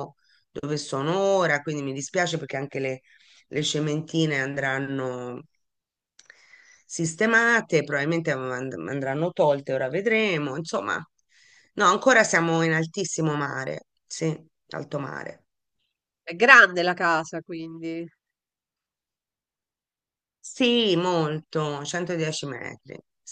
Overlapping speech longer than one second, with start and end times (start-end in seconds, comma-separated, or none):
none